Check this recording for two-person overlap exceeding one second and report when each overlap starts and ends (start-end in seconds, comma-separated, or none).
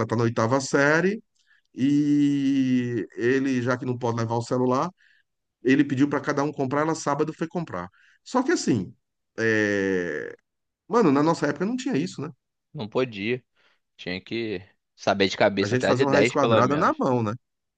15.6-16.9